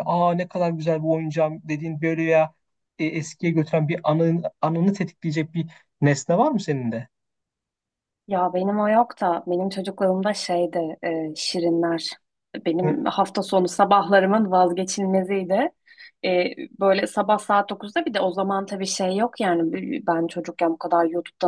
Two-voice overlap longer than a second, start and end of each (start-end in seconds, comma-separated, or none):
none